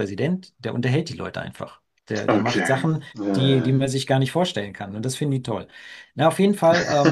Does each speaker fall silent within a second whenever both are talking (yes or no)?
no